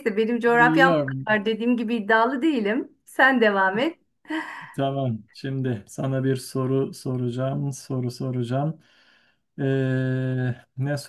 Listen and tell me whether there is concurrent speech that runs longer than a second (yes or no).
no